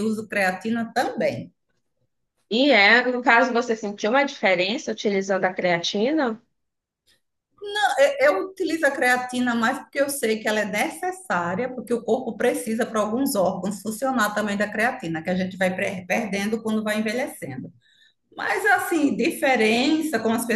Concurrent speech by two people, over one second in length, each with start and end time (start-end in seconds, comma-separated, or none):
none